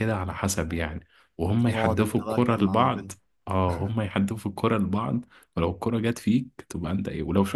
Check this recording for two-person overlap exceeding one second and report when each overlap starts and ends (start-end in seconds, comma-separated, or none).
1.7-3.1